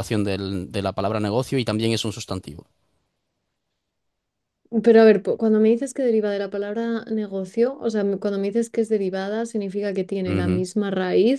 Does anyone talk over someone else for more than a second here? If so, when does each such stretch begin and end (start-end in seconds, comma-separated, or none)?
none